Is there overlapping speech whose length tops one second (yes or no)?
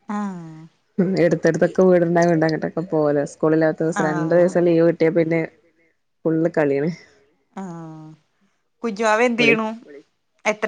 no